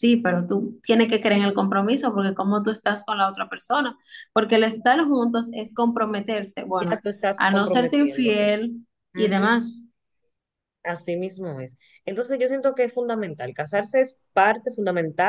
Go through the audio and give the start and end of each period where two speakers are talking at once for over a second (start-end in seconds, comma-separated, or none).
6.8-8.4